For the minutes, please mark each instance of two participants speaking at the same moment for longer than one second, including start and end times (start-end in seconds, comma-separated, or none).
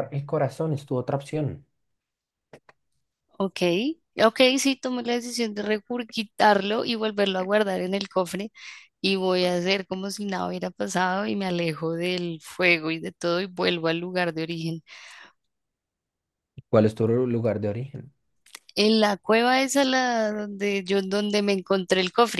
none